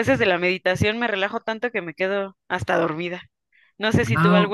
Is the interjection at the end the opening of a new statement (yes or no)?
no